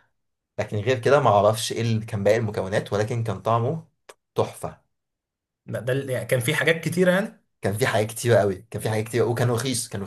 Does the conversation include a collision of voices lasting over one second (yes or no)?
no